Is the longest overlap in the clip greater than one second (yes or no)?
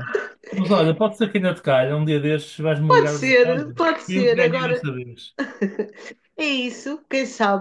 yes